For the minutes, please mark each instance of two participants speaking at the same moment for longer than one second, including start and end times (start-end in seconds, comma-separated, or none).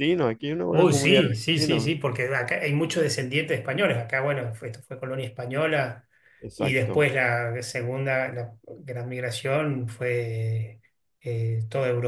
0.7-1.9